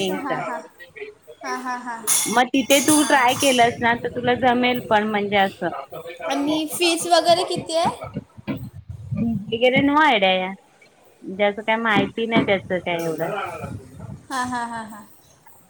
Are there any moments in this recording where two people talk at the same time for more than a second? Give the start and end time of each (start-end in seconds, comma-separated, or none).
none